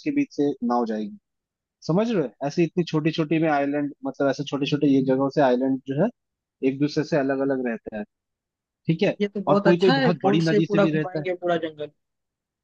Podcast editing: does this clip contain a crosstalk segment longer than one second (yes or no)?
yes